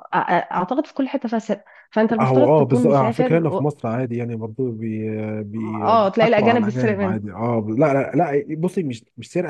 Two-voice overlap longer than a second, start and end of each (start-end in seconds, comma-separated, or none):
2.2-3.6, 5.8-7.2